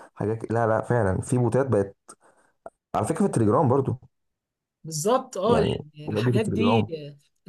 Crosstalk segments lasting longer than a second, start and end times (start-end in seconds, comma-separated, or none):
5.5-6.9